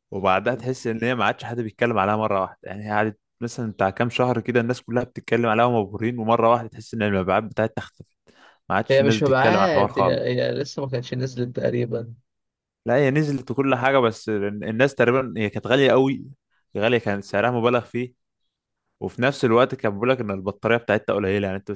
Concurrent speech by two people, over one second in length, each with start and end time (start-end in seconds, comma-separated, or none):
8.9-10.3